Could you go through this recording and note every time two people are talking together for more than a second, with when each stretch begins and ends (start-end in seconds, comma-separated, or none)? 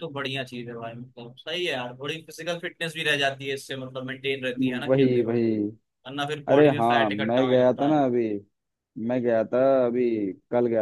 6.5-8.0